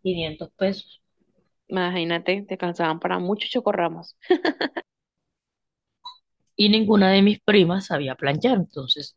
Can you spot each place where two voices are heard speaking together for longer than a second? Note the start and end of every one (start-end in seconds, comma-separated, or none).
none